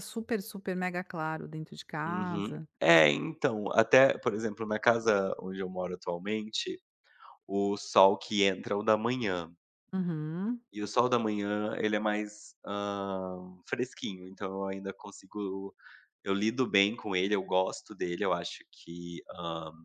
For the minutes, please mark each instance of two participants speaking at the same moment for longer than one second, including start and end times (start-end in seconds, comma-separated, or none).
none